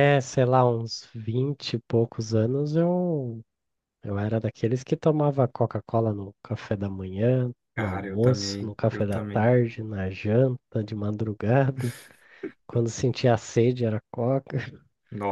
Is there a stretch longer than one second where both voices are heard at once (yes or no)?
yes